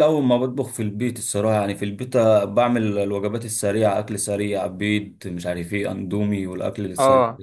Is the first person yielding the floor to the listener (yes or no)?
yes